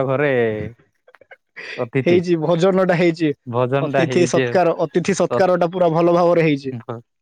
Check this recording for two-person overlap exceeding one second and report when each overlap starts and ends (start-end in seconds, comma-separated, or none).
none